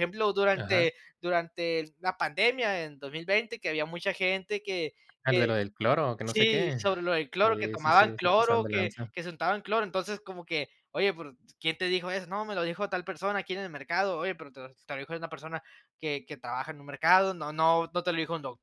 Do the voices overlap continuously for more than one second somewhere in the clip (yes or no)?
yes